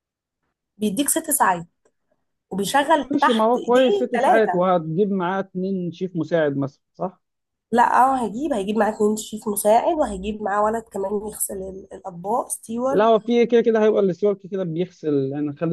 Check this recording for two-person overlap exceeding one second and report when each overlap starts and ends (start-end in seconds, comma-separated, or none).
2.9-4.7